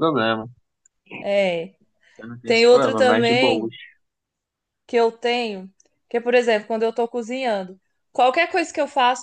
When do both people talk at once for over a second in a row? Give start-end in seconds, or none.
2.5-3.7